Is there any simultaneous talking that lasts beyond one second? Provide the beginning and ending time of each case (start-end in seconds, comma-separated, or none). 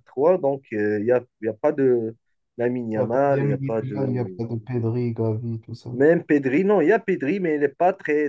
3.0-4.4